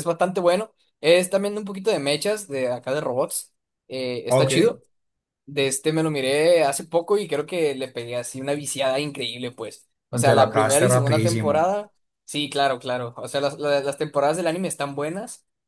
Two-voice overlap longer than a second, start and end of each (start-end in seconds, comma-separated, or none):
10.2-11.7